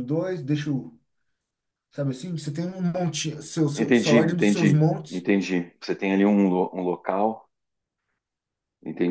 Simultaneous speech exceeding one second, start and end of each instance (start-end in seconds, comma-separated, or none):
3.8-5.2